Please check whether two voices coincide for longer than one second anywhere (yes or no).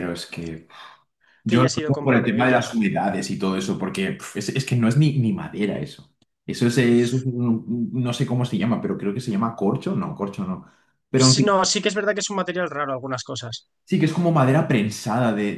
yes